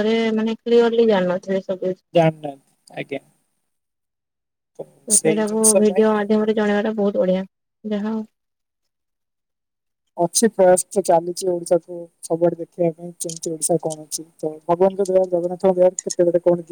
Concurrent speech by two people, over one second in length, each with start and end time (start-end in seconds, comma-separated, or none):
none